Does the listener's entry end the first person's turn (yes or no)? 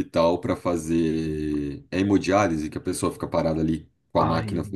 no